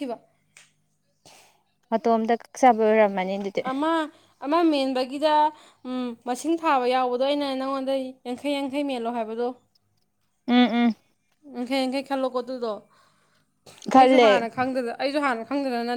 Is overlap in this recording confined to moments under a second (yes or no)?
yes